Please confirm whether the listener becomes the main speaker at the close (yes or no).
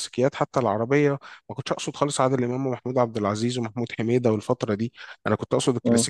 no